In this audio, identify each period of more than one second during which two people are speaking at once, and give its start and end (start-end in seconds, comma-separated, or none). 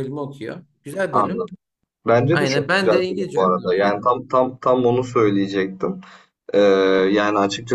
2.3-4.1